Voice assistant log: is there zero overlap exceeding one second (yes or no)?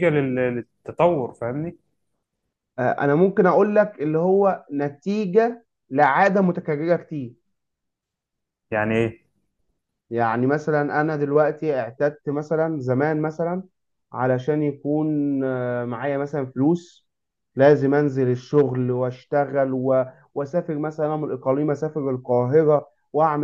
yes